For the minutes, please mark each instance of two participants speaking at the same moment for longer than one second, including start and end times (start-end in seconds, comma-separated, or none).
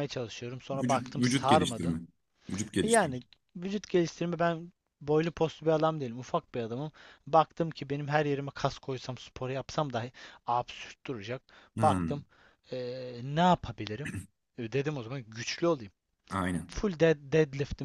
0.7-2.0